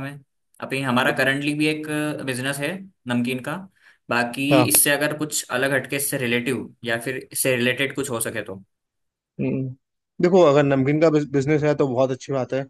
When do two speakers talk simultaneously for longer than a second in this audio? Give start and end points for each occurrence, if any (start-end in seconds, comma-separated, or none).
none